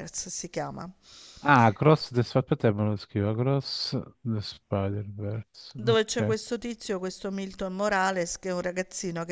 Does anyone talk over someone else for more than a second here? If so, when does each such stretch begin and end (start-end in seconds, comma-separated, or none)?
none